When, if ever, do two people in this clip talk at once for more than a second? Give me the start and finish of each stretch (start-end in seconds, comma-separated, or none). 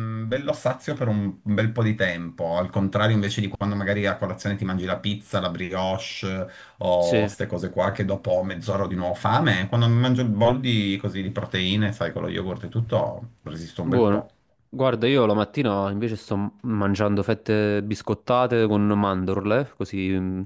none